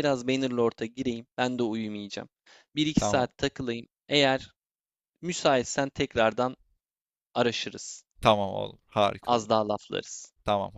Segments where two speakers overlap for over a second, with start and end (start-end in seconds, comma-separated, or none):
none